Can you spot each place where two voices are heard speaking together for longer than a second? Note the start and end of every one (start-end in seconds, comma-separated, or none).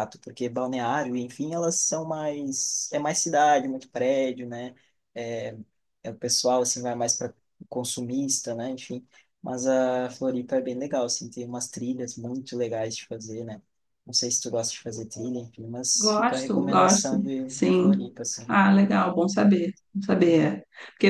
15.9-18.1